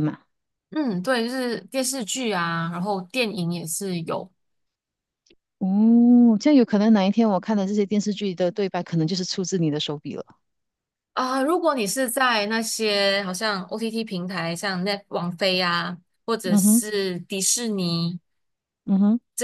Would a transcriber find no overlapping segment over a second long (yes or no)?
yes